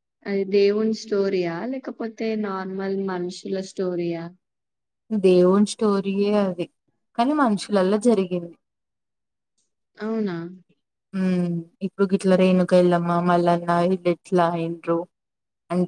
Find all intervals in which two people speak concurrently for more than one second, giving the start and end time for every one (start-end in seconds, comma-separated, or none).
none